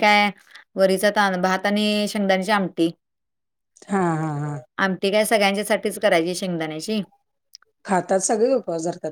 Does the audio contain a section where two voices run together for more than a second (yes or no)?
no